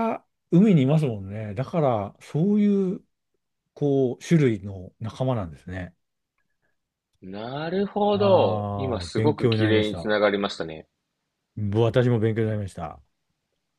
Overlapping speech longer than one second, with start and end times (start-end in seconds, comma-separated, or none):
8.1-10.1